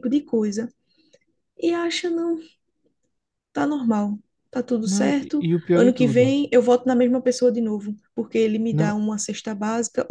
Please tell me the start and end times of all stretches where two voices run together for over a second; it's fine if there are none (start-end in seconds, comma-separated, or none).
4.8-6.3